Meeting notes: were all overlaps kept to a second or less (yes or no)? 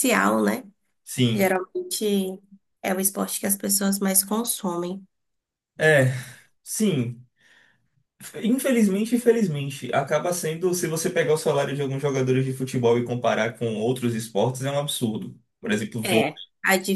yes